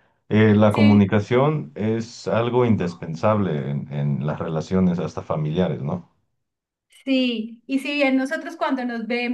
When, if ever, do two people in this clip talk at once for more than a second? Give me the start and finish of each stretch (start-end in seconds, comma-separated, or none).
none